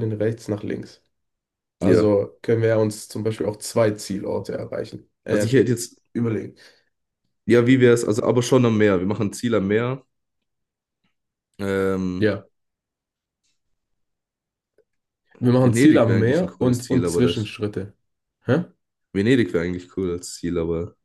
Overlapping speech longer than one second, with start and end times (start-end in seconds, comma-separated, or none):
15.6-17.5